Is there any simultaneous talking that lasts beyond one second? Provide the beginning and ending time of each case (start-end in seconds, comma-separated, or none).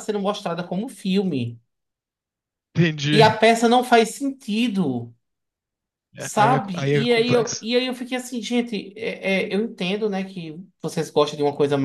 6.2-7.7